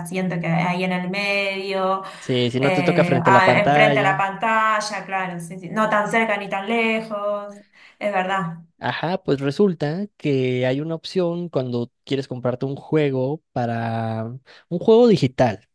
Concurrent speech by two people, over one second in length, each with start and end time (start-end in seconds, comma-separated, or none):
2.6-4.2